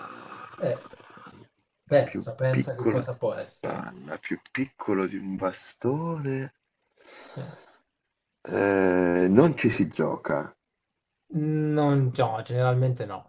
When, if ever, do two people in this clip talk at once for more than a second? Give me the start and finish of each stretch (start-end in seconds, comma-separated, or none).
2.0-3.9